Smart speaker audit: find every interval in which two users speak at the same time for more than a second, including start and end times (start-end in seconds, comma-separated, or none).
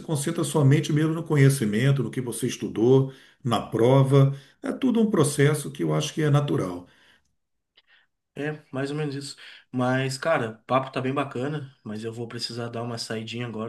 none